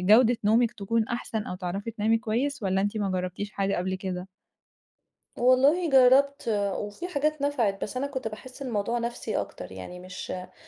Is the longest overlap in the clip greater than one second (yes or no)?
no